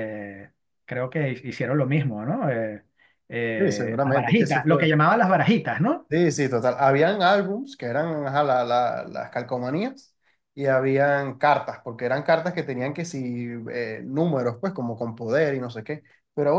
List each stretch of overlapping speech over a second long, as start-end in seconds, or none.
3.6-4.9